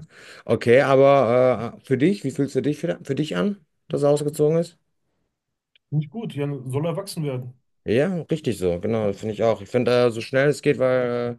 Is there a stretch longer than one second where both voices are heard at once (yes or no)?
no